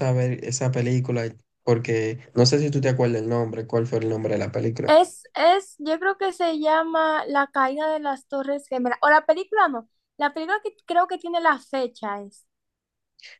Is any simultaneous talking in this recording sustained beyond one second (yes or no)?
no